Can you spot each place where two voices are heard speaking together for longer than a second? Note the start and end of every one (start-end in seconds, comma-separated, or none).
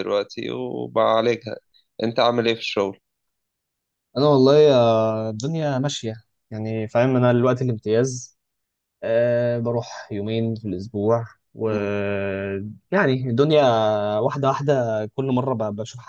none